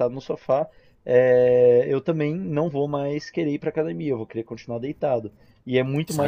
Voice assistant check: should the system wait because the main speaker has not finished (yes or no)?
no